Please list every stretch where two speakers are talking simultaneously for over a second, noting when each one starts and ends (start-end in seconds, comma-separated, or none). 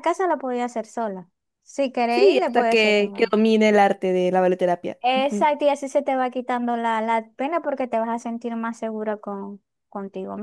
2.1-3.3